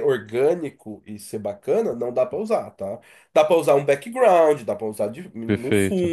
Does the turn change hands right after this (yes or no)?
no